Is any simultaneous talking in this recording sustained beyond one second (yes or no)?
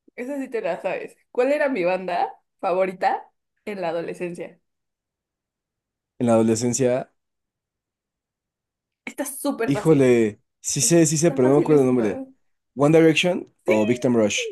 yes